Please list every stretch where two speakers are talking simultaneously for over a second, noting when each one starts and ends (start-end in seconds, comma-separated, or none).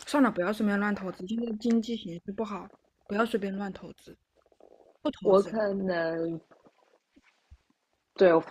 none